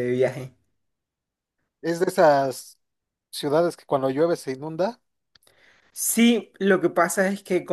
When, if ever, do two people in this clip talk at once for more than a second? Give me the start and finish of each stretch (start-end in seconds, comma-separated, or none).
none